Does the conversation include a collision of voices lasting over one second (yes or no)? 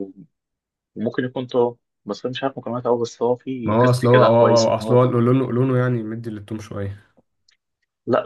yes